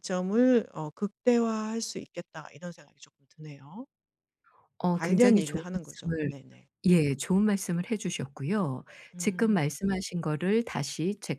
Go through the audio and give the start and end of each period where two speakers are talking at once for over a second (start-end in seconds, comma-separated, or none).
4.9-6.3